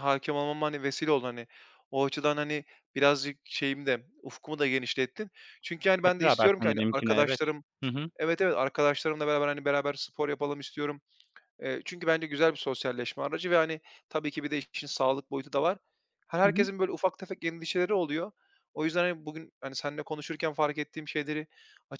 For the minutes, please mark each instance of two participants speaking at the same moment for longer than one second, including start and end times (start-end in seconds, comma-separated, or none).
6.0-7.4